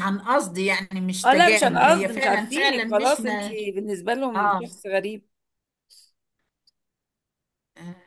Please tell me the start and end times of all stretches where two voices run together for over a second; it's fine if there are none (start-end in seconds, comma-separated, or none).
1.2-3.5